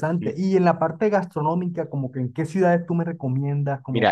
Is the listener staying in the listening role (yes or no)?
no